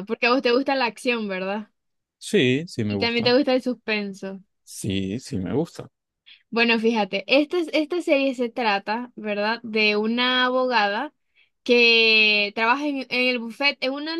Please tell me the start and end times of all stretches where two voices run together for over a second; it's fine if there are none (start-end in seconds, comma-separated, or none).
none